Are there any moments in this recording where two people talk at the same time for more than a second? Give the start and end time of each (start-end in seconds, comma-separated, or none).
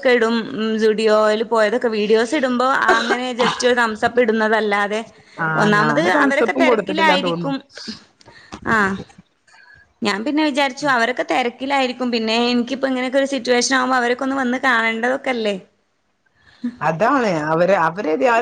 5.6-7.5